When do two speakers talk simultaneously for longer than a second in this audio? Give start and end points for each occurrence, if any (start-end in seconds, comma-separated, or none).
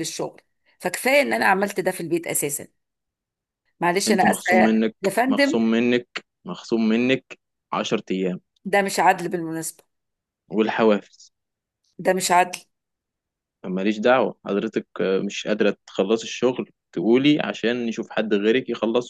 4.1-5.6